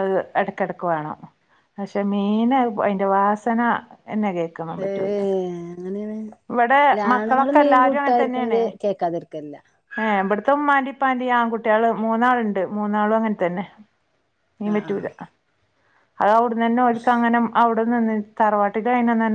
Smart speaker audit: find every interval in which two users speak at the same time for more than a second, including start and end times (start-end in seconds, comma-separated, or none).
6.9-8.6